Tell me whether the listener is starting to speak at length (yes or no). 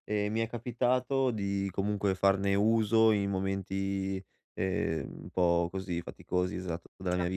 no